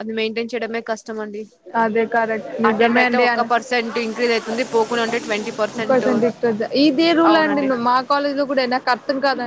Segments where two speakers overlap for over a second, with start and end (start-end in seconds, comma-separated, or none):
none